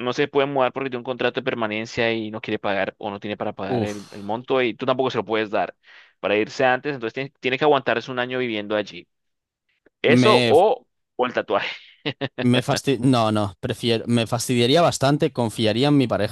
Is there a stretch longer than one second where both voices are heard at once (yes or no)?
no